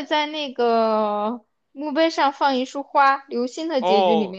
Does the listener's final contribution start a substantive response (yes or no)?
yes